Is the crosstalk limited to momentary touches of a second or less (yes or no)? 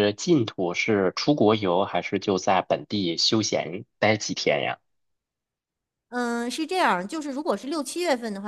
yes